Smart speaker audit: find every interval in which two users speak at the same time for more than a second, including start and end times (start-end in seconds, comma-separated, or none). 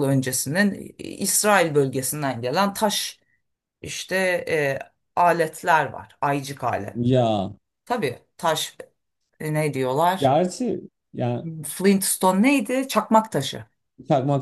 none